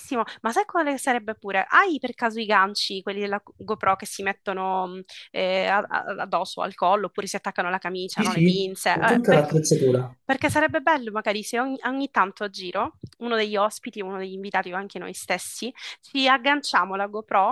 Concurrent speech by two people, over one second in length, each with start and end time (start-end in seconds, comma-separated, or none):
8.1-9.5